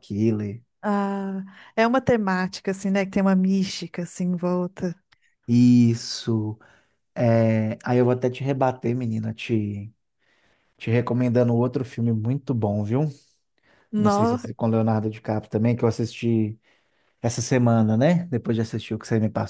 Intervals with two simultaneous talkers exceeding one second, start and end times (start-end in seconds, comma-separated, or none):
none